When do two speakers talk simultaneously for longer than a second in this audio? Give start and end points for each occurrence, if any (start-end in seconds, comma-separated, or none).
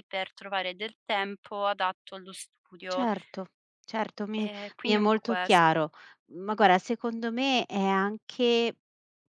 4.4-5.7